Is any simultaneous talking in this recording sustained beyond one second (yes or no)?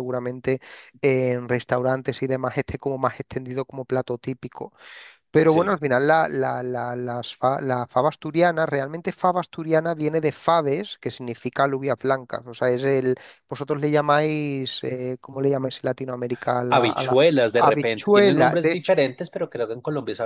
yes